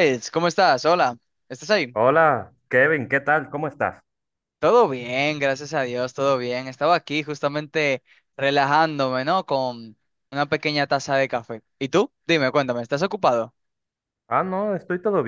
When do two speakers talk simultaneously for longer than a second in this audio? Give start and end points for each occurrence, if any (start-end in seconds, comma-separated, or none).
none